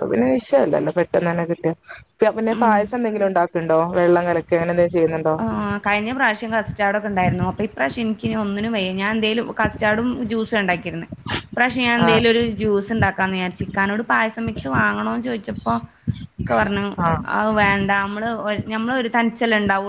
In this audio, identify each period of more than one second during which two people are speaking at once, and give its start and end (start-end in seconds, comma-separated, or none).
none